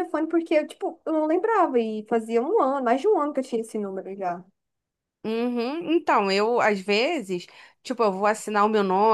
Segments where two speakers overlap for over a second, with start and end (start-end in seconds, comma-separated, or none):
none